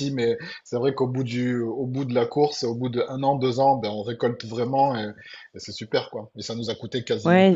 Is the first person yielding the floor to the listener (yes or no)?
yes